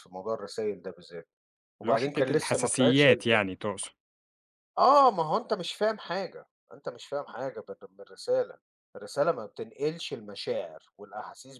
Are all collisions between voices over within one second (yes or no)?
no